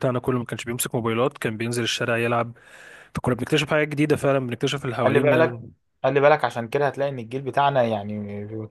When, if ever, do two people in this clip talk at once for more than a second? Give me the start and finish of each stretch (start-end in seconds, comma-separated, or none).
none